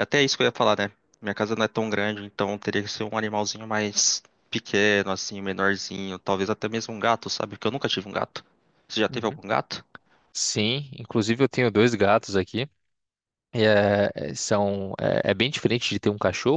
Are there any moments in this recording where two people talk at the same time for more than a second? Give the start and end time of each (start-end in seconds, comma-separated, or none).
none